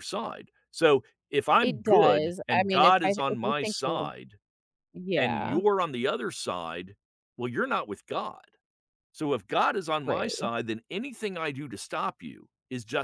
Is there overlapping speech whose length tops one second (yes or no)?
yes